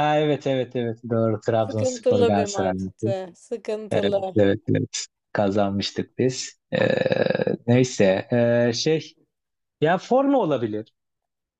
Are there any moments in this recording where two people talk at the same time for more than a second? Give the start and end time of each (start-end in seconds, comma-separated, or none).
1.7-3.1